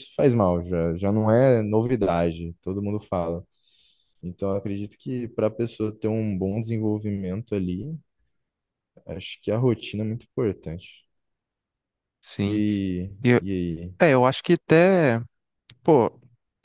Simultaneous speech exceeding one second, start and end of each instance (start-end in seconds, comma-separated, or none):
none